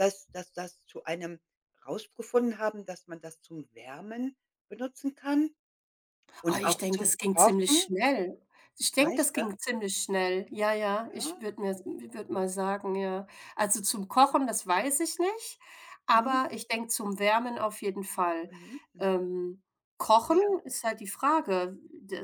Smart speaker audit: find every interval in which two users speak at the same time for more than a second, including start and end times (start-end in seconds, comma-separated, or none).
6.5-7.9